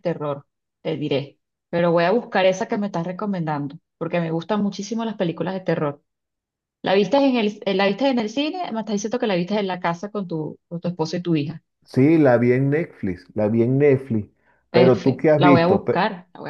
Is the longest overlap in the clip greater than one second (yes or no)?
yes